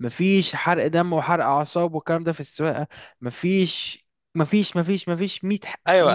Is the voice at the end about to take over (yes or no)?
yes